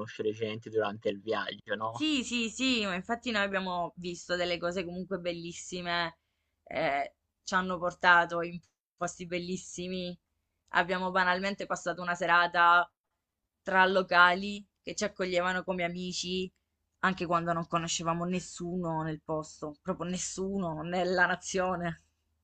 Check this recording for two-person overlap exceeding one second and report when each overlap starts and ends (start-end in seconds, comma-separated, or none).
none